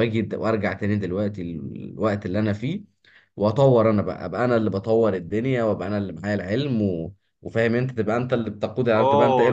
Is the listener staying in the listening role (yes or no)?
no